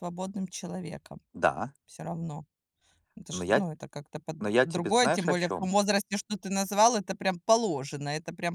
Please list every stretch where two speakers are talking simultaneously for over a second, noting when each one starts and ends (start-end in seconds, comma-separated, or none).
4.4-5.7